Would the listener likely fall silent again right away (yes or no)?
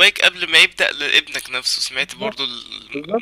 no